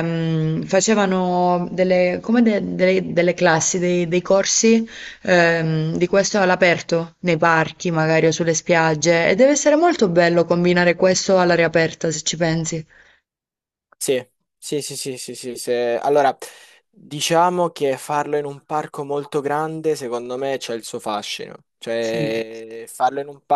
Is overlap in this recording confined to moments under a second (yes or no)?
yes